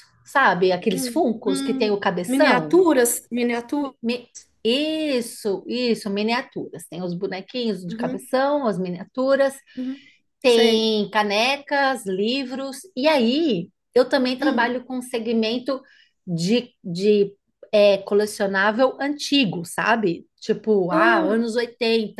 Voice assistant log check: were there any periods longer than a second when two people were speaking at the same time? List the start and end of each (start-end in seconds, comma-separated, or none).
0.9-2.8